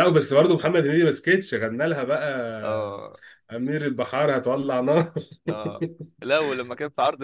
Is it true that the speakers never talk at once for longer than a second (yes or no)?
yes